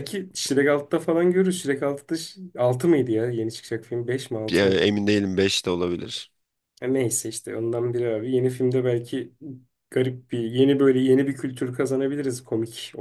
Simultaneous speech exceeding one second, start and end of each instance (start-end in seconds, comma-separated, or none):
none